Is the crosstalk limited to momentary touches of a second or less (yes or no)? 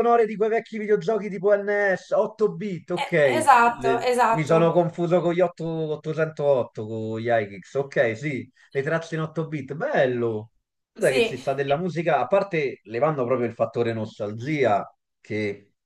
no